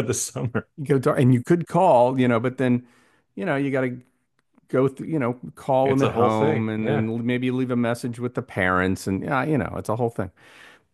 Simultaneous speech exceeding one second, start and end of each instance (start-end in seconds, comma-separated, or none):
5.8-7.1